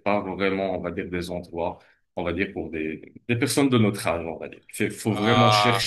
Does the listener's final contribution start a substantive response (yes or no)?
no